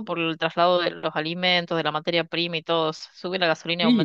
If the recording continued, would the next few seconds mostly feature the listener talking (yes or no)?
yes